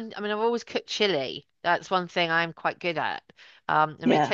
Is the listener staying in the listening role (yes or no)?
yes